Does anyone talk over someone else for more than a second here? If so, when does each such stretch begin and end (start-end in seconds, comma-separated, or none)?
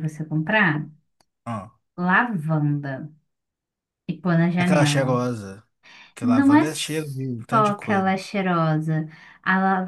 6.2-8.1